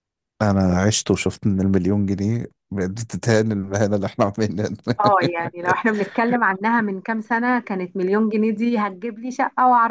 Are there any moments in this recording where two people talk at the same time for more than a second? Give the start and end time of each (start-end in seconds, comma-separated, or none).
none